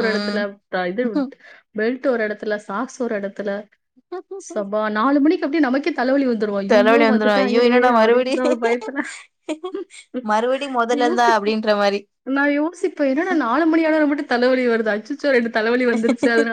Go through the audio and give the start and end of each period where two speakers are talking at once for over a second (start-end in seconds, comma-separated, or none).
6.7-8.3